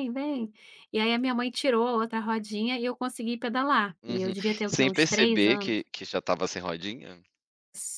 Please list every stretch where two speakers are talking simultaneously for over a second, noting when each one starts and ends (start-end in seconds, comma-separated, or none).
4.0-5.7